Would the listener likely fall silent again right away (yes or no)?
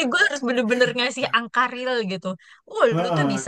yes